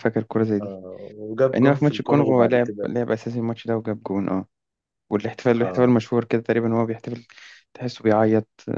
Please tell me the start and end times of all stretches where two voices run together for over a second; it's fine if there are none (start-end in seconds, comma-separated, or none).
1.6-2.9